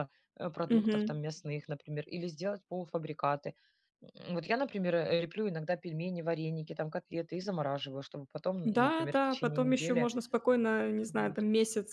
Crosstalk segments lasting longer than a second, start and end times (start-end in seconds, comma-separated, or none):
8.6-10.1